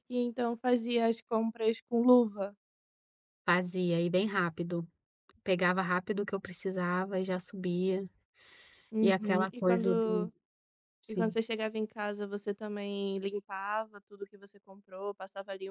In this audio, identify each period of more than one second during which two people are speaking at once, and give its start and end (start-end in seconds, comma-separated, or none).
9.0-10.3